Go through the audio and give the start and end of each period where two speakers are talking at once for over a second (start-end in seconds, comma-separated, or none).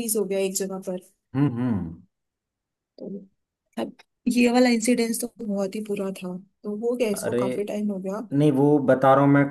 none